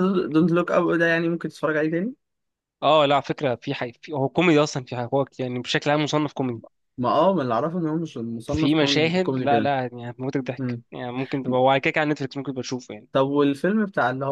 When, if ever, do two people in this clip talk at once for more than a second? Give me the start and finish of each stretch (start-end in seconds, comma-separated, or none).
8.5-9.7